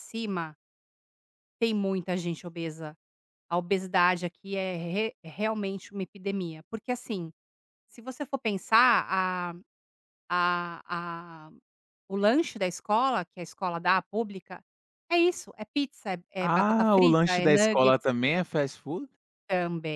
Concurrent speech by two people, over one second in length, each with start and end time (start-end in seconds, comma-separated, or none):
16.4-18.1